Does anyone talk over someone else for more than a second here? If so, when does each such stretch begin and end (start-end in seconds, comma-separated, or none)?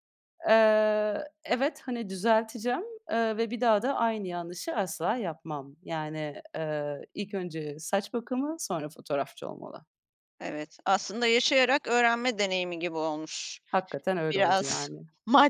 none